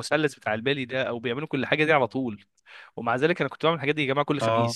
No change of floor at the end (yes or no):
yes